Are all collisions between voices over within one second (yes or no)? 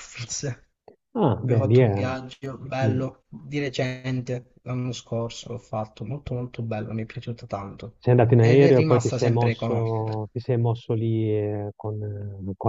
no